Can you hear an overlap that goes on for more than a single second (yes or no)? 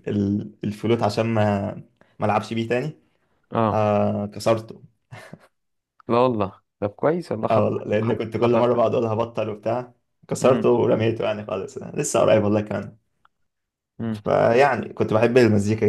yes